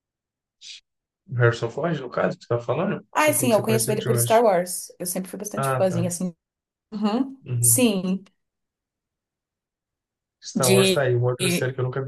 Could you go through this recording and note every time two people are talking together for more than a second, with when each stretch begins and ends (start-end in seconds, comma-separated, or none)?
3.1-4.3